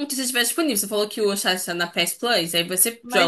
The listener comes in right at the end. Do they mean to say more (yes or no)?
yes